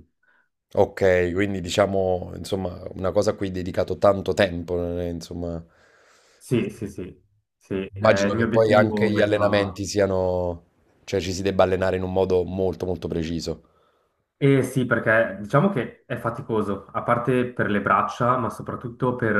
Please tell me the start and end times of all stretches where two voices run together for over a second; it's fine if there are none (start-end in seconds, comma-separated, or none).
8.0-9.8